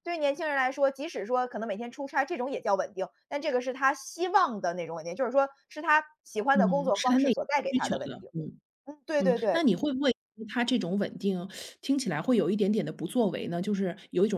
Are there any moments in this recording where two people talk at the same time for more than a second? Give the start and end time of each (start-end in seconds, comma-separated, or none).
6.5-8.3